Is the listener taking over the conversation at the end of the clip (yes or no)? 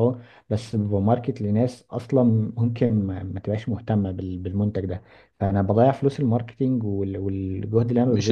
yes